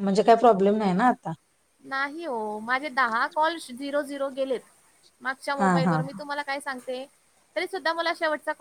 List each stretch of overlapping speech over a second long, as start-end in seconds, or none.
none